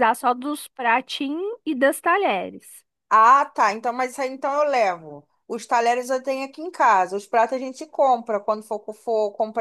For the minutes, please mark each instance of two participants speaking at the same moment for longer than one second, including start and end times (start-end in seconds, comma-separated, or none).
none